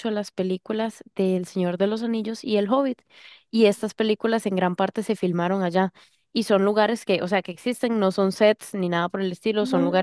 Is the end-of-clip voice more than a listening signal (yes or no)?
no